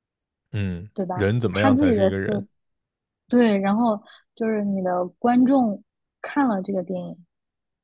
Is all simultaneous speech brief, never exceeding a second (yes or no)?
no